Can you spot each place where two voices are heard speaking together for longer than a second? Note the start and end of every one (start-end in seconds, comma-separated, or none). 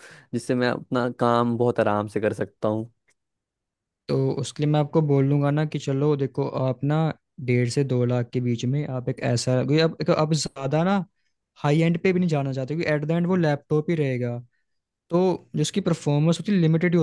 none